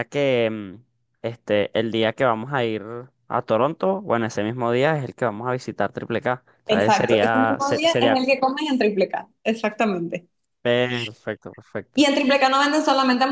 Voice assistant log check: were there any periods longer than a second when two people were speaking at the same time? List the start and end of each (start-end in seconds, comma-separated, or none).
6.7-8.2